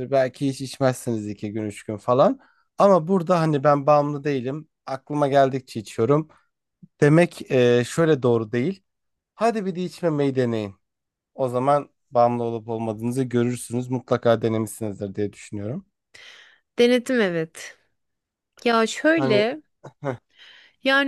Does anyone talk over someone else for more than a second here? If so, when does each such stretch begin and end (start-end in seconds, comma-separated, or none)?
none